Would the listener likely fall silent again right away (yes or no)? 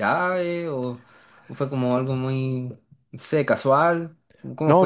no